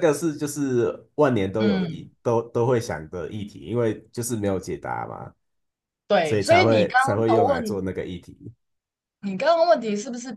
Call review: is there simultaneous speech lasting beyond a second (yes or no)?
yes